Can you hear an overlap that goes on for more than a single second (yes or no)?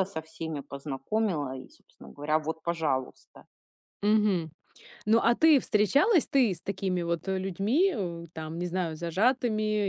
no